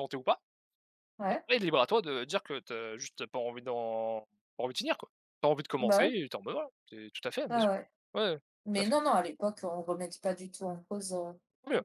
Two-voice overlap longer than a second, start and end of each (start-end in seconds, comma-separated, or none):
none